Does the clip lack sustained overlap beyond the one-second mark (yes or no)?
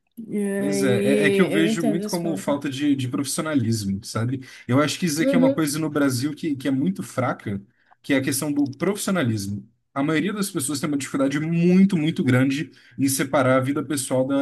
no